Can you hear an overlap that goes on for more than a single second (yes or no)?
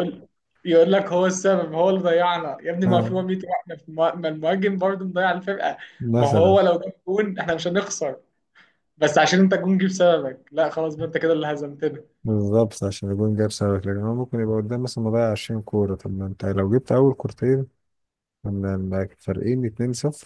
no